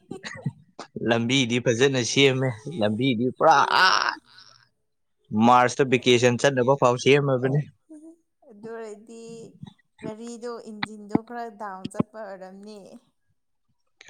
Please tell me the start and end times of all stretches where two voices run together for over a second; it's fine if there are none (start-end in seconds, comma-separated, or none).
none